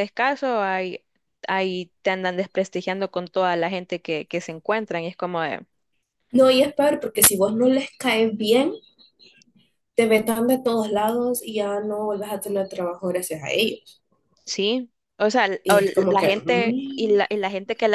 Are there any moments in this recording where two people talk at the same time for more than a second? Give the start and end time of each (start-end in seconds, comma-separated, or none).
15.6-17.4